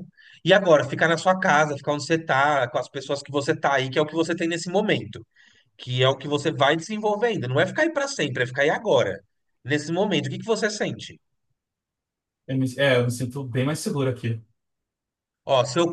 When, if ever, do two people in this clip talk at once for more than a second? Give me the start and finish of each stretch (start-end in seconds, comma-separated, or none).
none